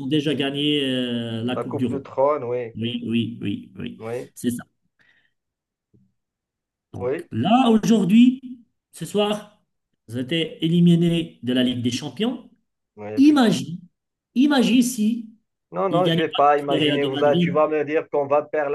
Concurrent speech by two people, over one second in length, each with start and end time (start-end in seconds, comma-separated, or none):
15.9-17.6